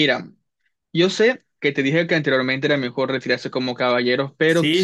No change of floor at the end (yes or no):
no